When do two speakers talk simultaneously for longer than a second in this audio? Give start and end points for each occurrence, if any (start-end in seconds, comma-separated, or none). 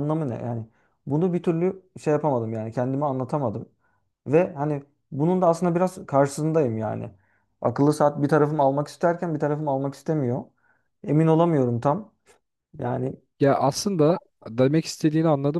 none